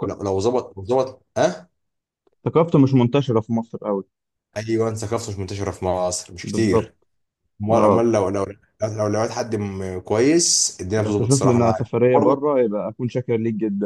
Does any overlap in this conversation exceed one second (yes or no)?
yes